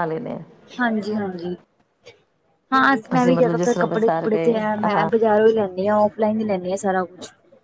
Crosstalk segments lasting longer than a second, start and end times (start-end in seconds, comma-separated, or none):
3.1-5.1